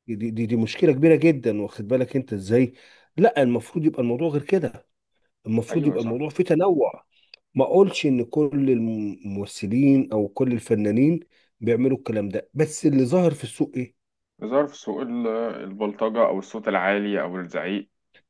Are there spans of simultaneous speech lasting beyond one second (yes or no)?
no